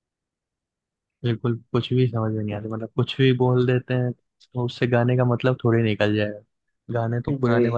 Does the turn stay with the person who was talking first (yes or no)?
yes